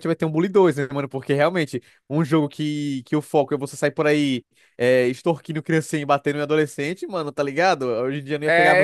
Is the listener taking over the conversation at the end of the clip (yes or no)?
yes